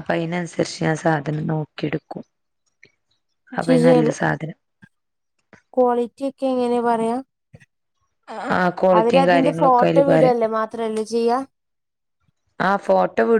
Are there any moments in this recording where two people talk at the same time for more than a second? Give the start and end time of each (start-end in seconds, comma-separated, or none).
9.0-10.4